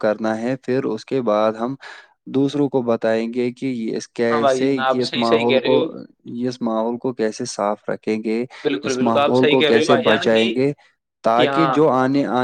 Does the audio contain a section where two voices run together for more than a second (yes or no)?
yes